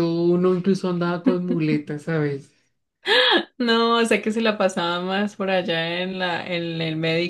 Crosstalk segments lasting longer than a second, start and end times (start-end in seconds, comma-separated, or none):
none